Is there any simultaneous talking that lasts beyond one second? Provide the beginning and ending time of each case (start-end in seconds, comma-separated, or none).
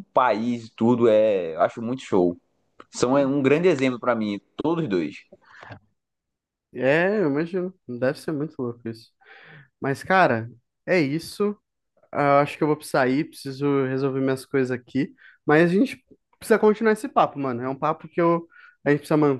none